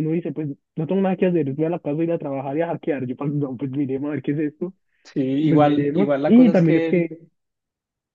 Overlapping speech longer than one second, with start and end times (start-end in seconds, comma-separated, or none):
5.5-7.2